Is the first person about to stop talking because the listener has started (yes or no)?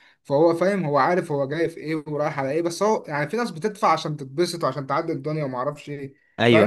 yes